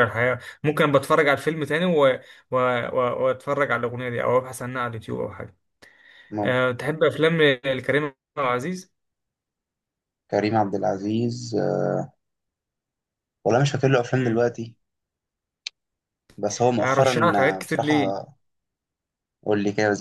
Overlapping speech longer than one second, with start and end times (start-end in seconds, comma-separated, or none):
16.8-18.3